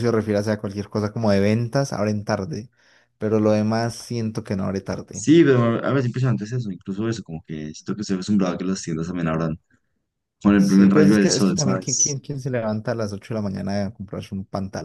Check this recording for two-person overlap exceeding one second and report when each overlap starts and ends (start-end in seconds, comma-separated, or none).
10.6-12.2